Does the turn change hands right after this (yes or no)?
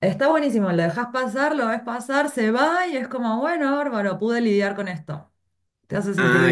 yes